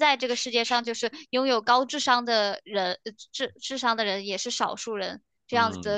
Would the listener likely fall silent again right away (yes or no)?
yes